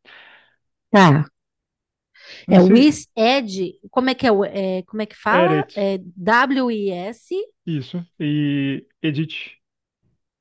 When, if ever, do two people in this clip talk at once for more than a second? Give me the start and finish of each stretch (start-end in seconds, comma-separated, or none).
none